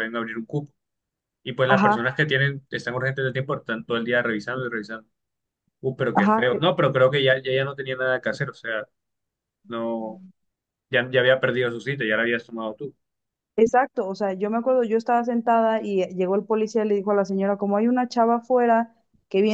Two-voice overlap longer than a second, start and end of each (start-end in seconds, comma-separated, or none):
none